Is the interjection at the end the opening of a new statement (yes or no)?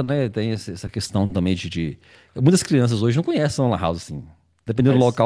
no